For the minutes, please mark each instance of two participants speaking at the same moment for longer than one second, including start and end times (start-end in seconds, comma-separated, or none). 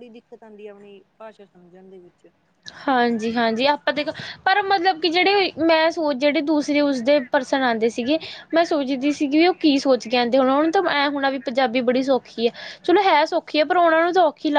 none